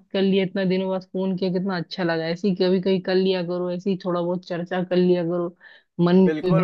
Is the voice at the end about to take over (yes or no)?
yes